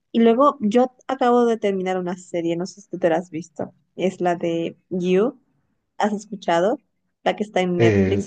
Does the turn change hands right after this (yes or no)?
no